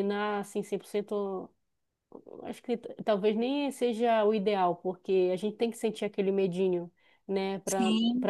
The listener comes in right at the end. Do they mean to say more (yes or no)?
no